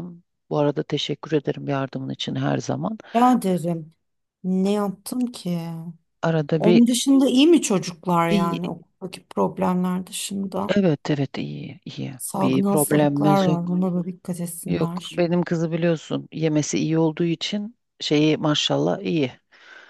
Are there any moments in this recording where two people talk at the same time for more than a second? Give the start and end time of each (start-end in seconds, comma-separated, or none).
12.2-13.7